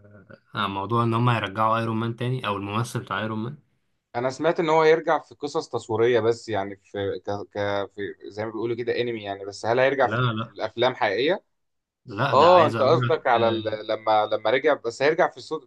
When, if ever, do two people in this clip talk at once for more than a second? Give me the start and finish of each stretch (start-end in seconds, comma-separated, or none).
12.3-13.8